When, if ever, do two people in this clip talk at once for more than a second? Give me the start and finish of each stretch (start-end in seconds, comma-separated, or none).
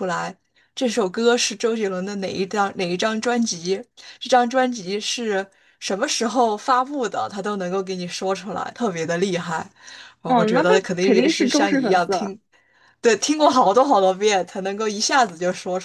10.2-12.3